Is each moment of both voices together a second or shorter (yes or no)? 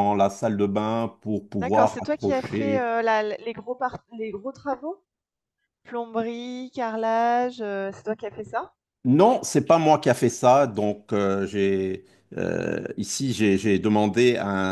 no